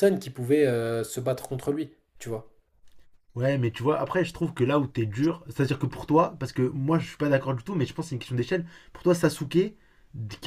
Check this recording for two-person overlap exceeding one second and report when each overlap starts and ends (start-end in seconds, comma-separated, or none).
none